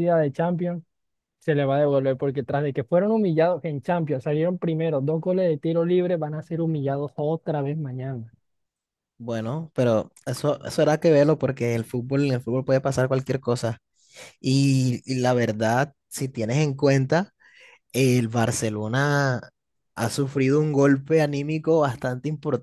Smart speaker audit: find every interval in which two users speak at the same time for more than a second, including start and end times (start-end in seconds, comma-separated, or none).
none